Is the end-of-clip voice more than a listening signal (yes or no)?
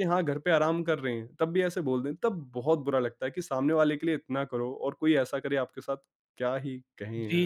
yes